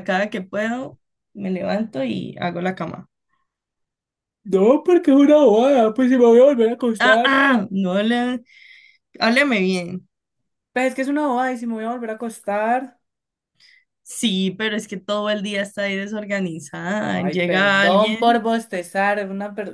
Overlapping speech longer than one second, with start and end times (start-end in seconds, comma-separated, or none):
17.1-18.4